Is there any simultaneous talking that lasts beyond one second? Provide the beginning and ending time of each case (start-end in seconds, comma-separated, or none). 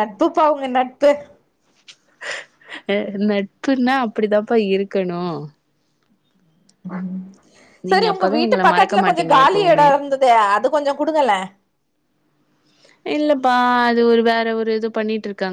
7.9-9.9